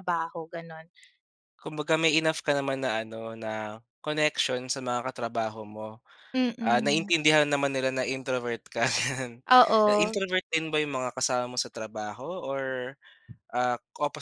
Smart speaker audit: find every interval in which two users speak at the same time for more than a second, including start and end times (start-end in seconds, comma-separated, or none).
none